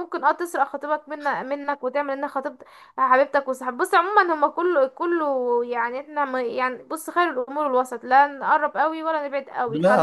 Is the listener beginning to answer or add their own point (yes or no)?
yes